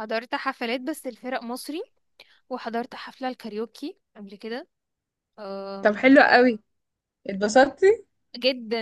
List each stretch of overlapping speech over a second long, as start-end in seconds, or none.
none